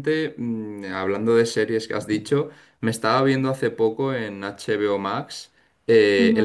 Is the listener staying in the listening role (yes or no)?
yes